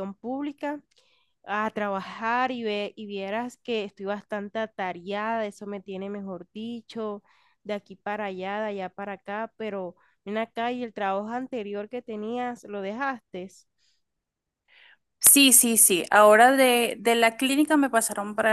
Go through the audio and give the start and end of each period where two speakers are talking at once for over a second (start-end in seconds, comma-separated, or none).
none